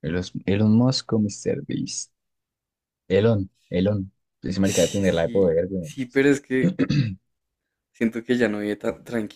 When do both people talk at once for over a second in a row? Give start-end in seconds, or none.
4.6-5.9